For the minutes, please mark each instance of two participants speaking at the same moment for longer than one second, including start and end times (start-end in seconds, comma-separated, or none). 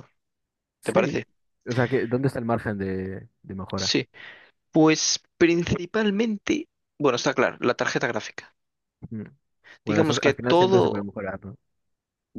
9.8-11.1